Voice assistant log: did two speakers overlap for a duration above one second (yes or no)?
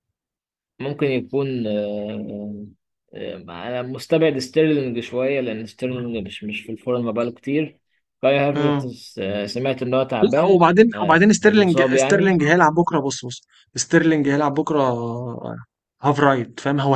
yes